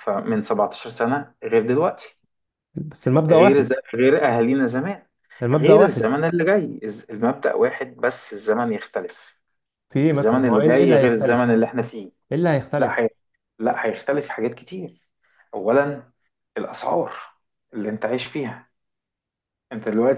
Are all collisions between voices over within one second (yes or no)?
no